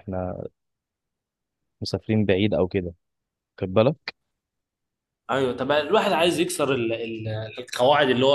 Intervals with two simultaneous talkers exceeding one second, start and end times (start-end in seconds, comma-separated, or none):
none